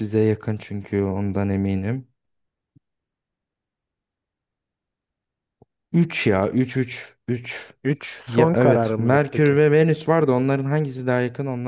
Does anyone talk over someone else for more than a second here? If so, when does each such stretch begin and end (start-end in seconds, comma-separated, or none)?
8.3-9.6